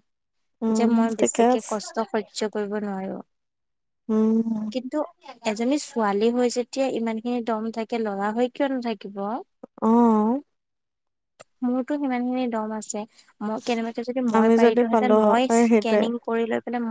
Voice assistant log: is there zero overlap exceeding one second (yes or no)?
no